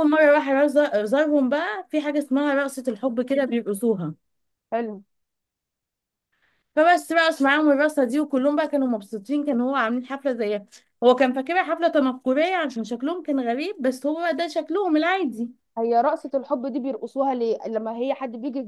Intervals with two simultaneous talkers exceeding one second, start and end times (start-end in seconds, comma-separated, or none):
none